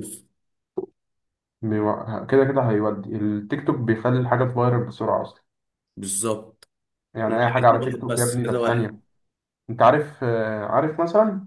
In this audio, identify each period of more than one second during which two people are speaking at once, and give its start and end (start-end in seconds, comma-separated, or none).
7.3-8.9